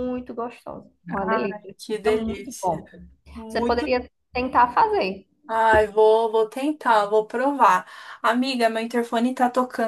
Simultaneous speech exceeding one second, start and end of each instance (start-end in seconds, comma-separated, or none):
1.1-2.8